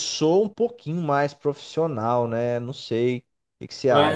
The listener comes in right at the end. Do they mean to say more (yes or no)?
yes